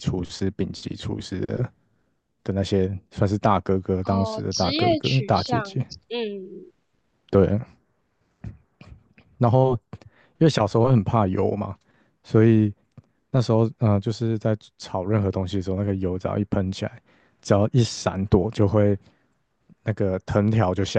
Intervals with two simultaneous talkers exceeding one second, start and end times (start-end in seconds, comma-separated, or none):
4.0-5.7